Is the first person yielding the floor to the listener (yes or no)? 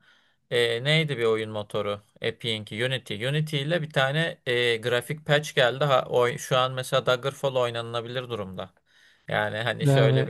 no